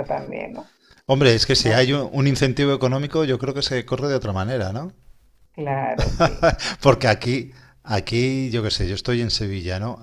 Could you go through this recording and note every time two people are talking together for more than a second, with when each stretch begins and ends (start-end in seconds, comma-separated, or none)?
none